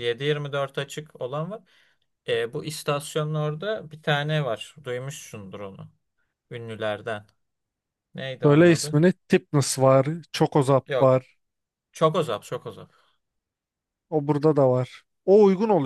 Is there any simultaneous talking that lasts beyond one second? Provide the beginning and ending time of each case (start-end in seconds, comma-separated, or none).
none